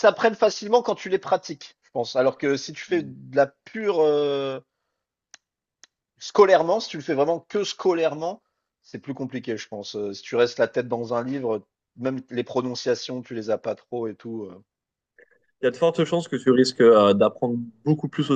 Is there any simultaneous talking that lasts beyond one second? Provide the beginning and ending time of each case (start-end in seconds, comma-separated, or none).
none